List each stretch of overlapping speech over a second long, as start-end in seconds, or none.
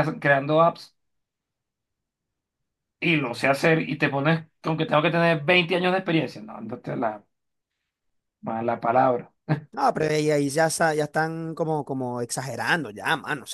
none